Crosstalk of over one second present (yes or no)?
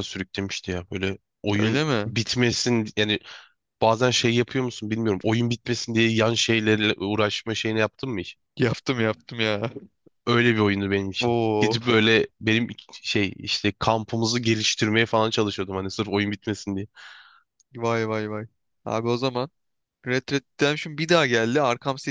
no